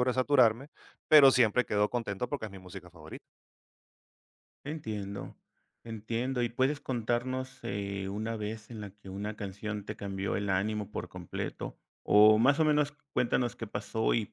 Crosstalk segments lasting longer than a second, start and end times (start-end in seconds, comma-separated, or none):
none